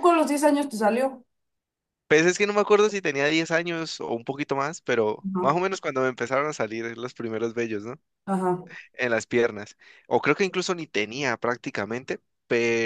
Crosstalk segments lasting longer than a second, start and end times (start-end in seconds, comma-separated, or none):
none